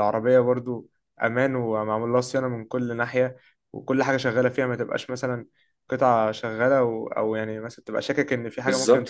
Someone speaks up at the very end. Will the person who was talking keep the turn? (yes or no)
no